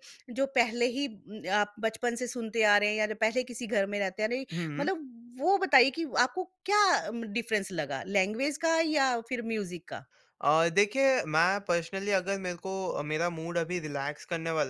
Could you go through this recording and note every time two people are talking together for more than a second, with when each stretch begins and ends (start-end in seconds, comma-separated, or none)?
none